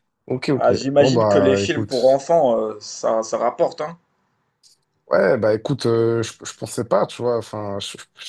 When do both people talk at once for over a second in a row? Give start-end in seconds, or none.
0.5-2.2